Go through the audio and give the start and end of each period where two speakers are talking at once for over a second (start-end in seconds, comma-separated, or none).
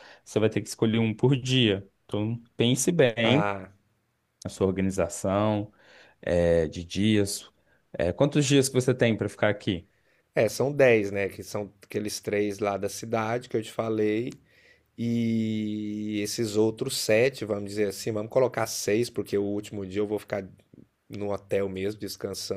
none